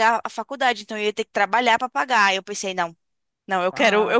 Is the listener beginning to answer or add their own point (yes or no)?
yes